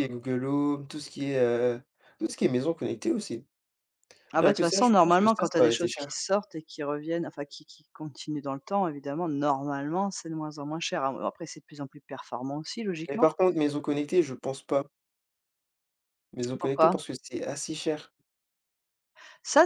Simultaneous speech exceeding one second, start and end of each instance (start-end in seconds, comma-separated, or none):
4.4-6.2